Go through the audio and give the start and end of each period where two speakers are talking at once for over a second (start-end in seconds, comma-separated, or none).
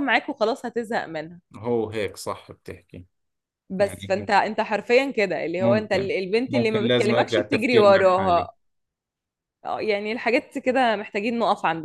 5.6-8.5